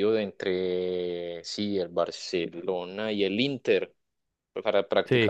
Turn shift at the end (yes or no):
no